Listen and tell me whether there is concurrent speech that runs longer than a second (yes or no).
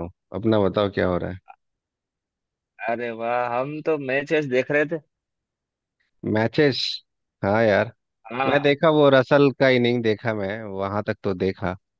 no